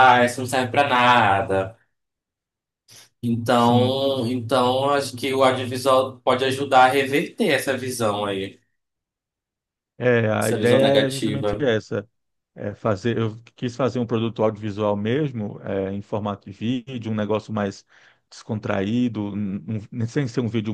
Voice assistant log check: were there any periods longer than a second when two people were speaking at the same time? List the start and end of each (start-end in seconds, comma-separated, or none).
10.4-11.7